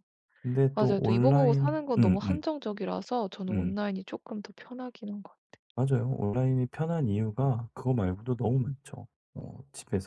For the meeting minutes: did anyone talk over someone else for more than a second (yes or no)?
yes